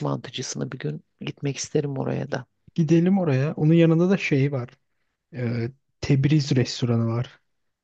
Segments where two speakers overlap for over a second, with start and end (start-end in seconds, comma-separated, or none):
none